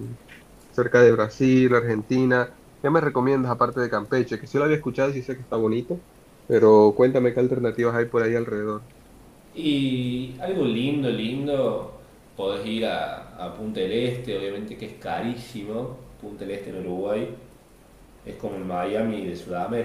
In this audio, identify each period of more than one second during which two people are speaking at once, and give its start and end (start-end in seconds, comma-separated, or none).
none